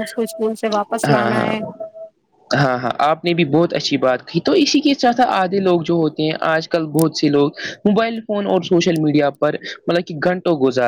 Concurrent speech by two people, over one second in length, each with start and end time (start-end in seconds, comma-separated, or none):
none